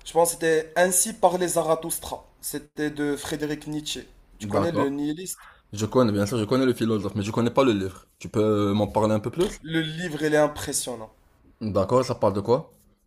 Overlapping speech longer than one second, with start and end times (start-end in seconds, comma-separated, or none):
none